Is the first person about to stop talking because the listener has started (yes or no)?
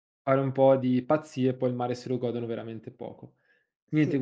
no